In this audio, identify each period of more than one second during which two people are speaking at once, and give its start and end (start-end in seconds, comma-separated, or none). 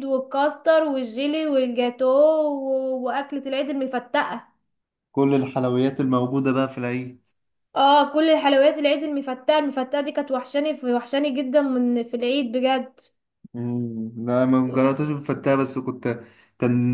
none